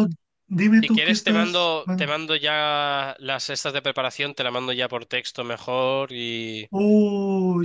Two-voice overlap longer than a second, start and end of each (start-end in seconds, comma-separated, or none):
0.7-2.1